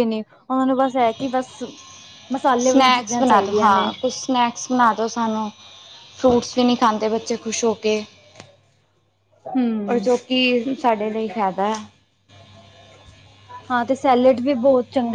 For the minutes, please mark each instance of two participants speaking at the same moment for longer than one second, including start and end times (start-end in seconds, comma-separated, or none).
2.6-3.9